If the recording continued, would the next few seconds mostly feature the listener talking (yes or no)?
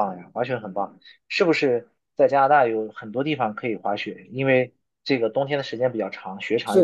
yes